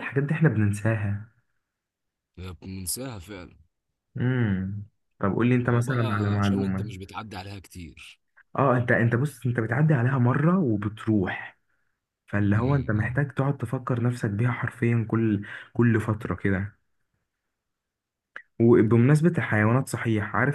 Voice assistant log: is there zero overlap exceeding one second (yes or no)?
no